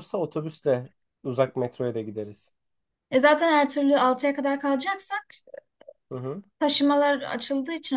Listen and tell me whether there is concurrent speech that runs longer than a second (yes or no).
no